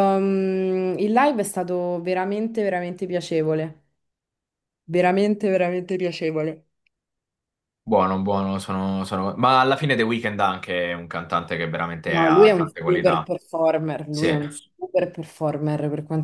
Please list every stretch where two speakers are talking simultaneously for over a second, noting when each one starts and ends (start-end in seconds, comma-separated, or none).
12.0-13.3